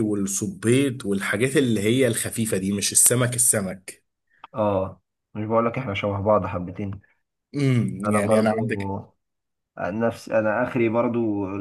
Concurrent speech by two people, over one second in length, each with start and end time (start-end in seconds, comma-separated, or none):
none